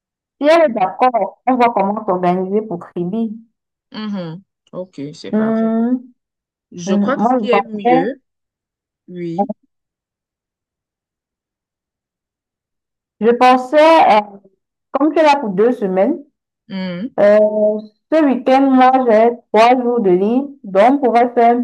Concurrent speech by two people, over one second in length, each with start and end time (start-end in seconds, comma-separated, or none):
6.9-8.2